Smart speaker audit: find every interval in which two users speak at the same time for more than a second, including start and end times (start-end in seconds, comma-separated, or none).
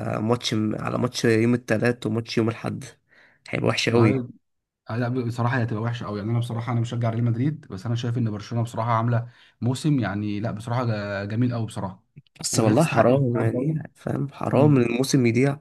12.5-13.8